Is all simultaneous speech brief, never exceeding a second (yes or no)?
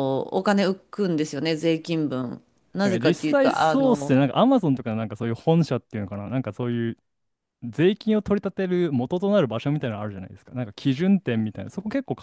no